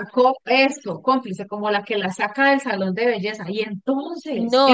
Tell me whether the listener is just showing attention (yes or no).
no